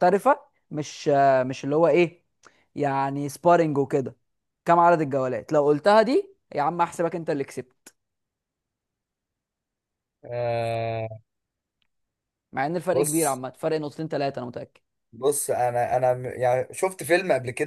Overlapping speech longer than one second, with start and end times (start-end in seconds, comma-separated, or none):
none